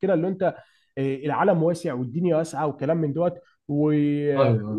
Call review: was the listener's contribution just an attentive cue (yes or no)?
yes